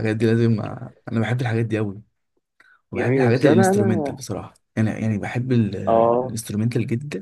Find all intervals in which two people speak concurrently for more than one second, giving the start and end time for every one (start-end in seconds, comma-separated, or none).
3.0-4.2